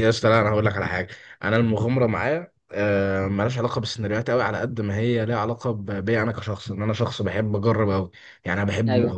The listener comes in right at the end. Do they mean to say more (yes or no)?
no